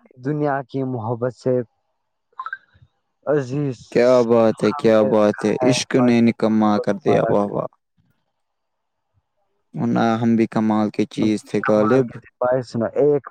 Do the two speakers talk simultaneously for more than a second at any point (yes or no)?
yes